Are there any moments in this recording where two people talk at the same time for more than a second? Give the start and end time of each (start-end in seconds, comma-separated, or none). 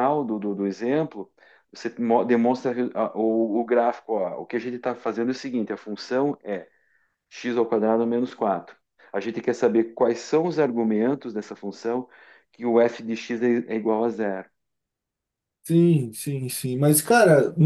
none